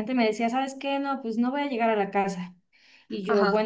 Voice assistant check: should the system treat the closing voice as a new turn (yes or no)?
no